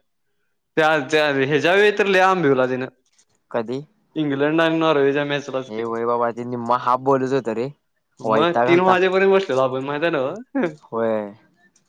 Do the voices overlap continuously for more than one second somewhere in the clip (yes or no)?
no